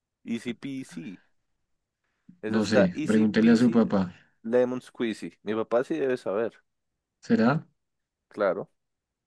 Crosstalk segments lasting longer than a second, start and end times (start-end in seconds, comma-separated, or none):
2.5-3.8